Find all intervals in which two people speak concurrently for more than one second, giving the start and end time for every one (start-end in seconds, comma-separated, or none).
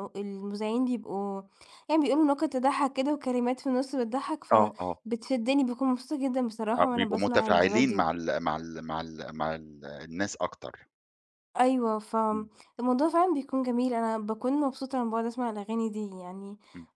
6.8-8.1